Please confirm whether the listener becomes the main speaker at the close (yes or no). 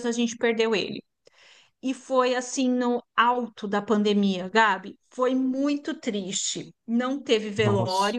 no